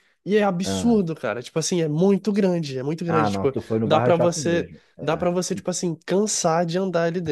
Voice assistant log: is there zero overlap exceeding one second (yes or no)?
no